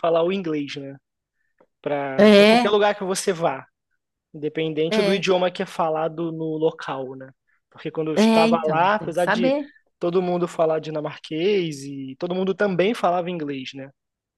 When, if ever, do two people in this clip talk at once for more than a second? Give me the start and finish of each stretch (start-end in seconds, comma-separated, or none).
8.1-9.5